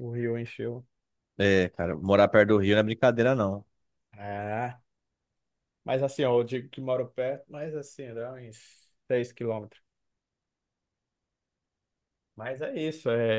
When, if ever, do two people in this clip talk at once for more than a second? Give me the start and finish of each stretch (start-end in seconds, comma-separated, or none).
none